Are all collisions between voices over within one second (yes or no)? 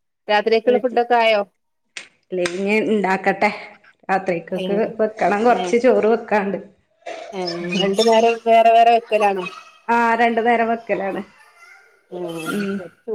yes